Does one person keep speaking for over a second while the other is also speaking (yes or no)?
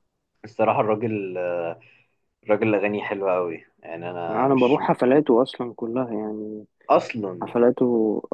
no